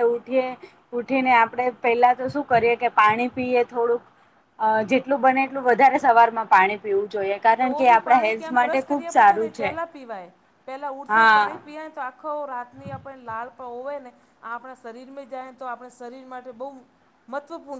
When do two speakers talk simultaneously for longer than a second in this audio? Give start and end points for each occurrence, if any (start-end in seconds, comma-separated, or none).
7.6-9.7